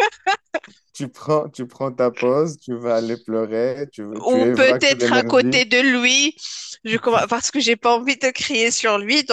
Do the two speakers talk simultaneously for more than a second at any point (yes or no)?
yes